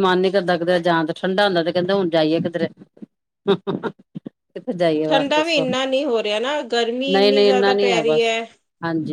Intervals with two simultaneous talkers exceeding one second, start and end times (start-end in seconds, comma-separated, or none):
6.9-8.3